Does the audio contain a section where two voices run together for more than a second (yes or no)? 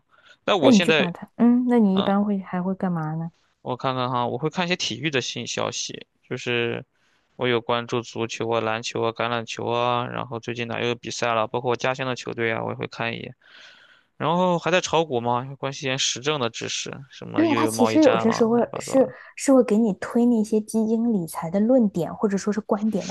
yes